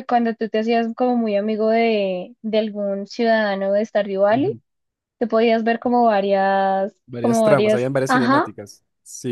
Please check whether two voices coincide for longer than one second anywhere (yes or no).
yes